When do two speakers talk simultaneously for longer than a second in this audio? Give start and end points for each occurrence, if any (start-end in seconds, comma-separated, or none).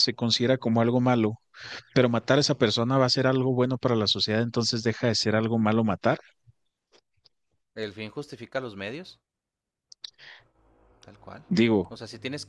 none